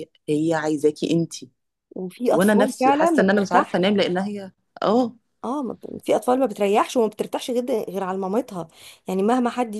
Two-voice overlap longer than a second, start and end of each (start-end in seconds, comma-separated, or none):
2.3-4.0